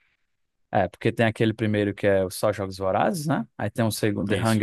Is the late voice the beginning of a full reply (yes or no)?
no